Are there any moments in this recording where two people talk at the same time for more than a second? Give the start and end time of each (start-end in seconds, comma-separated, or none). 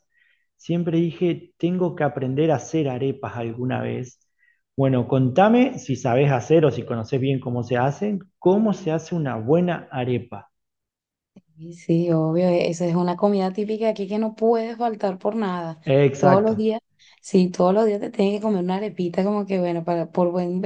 none